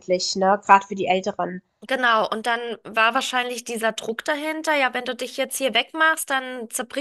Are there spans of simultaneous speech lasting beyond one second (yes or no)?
no